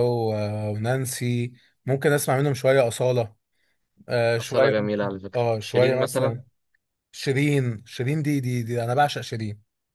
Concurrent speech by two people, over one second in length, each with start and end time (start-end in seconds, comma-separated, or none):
4.4-6.4